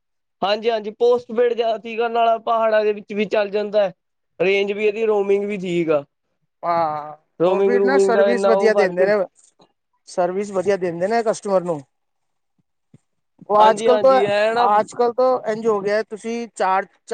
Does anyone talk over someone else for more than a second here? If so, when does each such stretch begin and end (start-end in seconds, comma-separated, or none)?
7.4-9.1